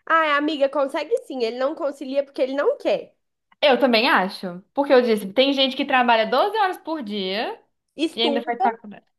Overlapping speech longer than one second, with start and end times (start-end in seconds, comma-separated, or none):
none